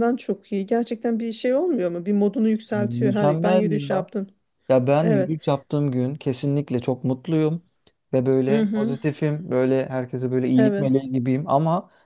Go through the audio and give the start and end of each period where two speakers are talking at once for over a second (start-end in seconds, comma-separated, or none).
2.7-4.1